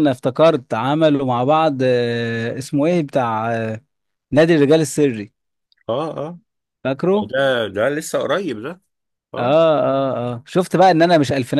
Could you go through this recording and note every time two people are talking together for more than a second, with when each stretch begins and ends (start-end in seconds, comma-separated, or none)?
none